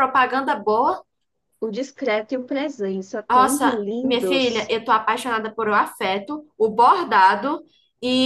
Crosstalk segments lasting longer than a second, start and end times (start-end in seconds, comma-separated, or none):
3.3-4.7